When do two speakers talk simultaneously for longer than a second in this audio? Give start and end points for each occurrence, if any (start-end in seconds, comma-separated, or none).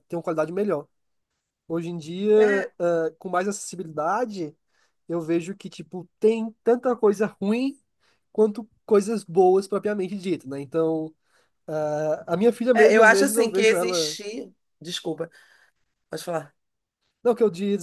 12.7-14.2